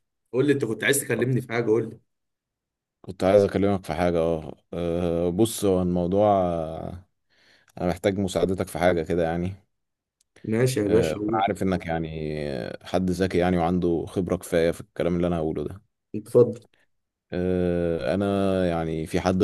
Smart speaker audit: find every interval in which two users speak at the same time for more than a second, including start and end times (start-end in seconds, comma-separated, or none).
none